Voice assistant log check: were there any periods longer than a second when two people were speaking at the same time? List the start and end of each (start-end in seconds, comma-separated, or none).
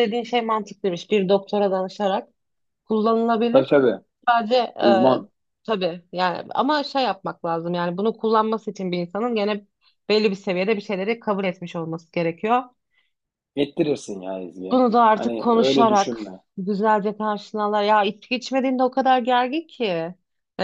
14.7-16.2